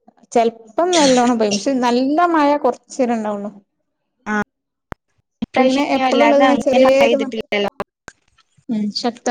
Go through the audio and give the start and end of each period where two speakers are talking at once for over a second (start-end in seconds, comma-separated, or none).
5.6-7.3